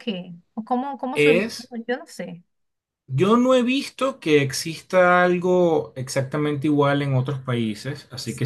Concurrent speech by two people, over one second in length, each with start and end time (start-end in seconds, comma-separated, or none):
none